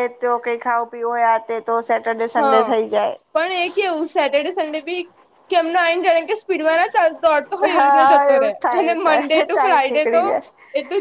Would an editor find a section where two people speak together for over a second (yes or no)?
yes